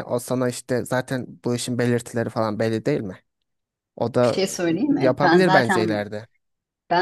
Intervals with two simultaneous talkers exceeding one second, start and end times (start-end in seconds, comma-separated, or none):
4.2-6.0